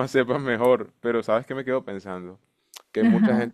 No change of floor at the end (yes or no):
yes